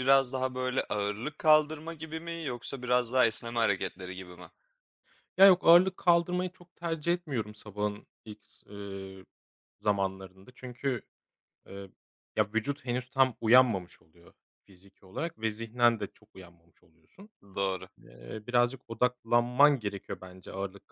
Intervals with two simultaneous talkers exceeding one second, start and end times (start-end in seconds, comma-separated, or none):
none